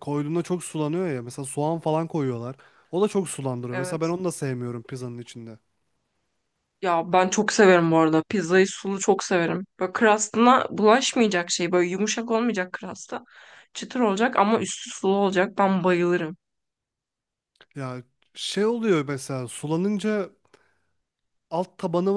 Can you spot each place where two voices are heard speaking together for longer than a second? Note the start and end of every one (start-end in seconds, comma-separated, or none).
none